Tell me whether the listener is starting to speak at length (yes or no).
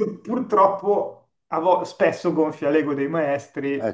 no